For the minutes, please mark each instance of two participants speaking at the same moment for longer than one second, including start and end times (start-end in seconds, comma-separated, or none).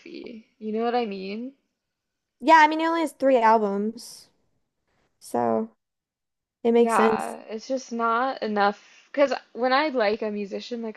none